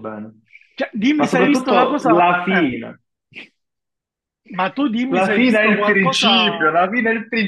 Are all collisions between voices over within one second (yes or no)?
no